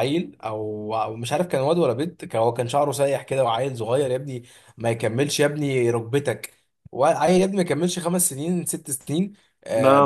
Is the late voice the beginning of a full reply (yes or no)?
no